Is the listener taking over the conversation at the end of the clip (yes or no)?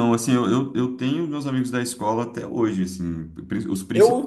yes